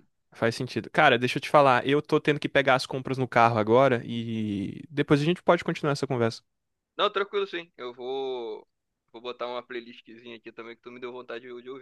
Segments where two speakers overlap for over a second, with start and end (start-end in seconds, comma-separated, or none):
none